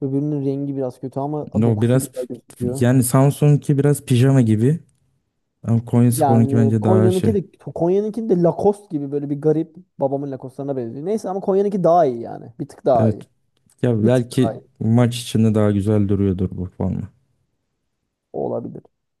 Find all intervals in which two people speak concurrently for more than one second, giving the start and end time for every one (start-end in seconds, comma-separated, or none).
6.1-7.3